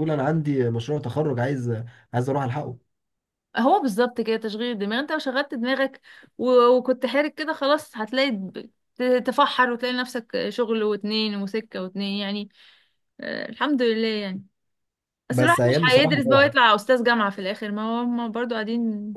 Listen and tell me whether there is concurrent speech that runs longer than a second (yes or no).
yes